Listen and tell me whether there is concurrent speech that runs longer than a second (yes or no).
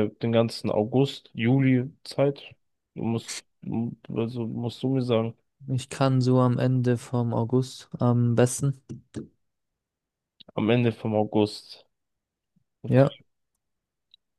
no